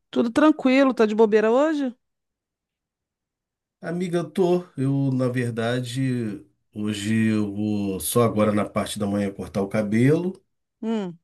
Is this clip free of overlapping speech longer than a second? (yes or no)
yes